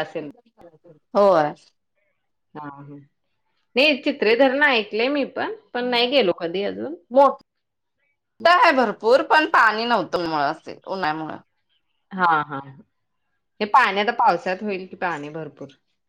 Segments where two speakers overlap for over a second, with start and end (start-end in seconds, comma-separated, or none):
none